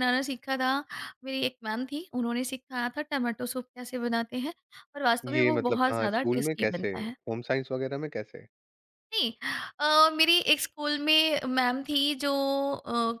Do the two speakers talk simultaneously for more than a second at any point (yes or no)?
yes